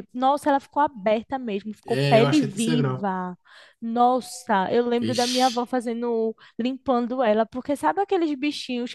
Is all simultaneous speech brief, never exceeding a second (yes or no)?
no